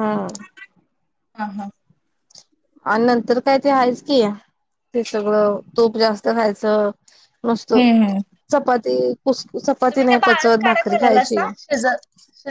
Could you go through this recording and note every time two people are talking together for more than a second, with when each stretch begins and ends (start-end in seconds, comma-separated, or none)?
9.9-11.4